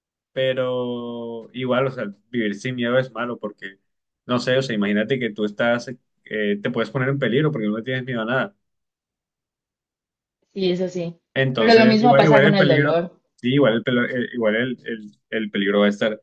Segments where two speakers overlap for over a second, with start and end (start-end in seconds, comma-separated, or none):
11.6-13.0